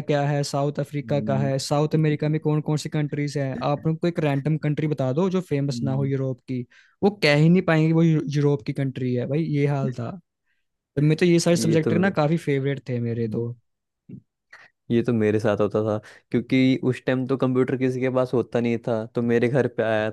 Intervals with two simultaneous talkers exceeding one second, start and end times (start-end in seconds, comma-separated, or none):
none